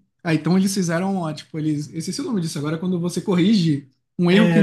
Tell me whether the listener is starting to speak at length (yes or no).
yes